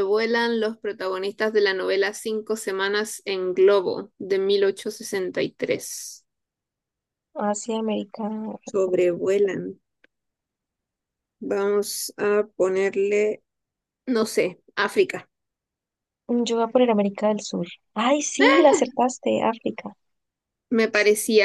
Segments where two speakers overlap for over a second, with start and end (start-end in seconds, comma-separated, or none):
none